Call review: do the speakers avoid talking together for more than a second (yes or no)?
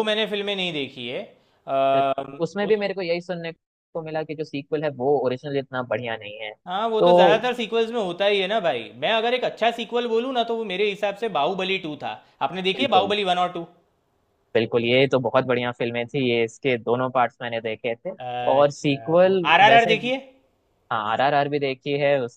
no